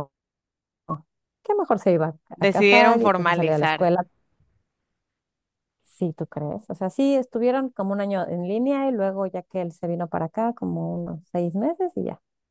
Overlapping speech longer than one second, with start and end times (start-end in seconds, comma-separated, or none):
2.3-3.9